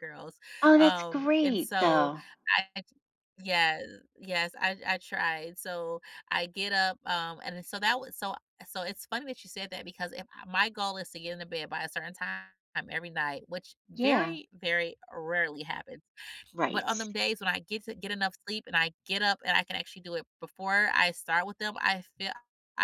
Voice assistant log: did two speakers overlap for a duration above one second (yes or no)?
yes